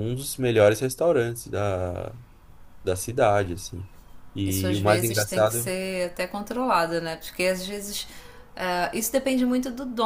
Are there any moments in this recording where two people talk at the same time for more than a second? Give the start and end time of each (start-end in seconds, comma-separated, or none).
4.4-5.8